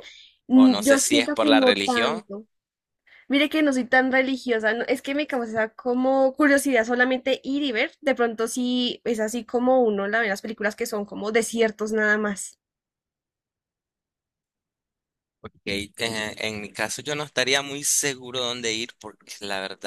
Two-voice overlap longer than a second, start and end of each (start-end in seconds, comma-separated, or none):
0.5-2.2